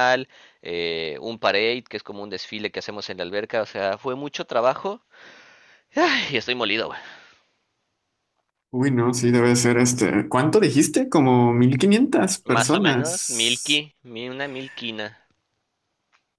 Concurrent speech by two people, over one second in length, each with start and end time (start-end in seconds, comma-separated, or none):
12.4-13.8